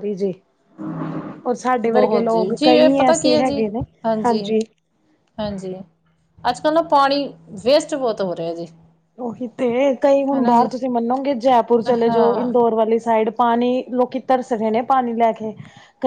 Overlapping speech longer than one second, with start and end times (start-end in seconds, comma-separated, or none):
1.9-3.6